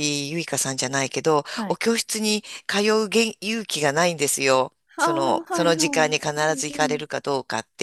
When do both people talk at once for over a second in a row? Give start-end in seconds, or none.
5.0-7.0